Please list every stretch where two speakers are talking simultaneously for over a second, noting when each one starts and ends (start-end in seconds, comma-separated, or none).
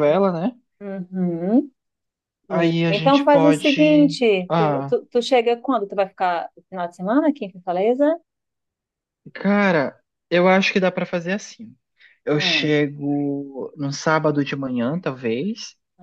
2.5-4.9